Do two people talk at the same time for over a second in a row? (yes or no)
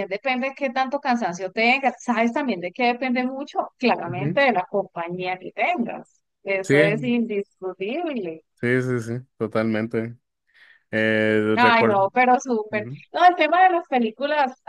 no